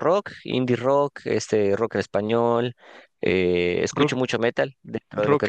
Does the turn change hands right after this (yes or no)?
yes